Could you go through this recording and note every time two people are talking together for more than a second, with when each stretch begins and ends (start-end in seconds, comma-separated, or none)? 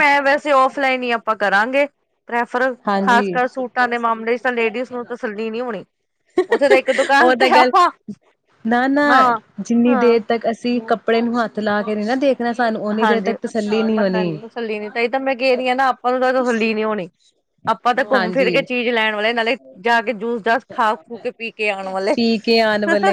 none